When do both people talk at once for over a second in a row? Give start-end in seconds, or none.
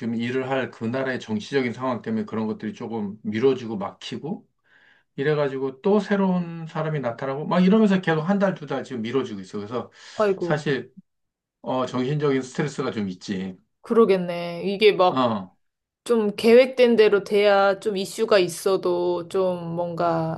none